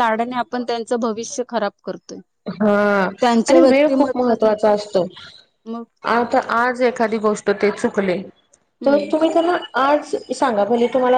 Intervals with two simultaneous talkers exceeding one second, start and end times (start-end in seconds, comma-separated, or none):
none